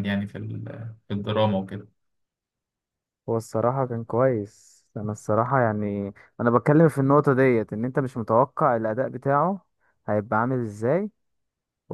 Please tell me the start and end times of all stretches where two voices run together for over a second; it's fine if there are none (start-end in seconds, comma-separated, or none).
none